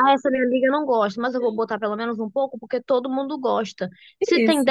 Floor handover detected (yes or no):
no